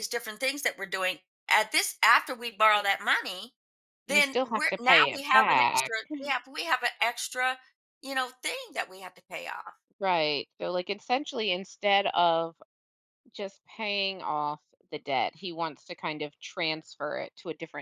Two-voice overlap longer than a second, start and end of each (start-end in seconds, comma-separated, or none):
4.1-6.0